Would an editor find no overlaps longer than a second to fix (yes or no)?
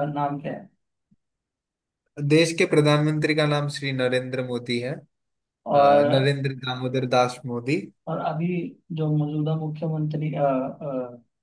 yes